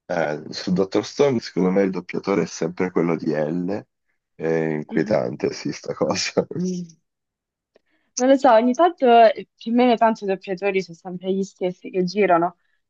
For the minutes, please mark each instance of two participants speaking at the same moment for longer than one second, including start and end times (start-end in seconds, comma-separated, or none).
none